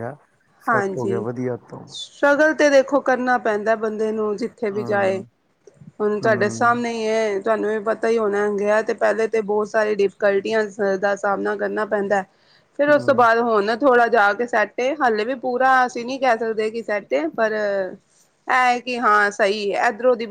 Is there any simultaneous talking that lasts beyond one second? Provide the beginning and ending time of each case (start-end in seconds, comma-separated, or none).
none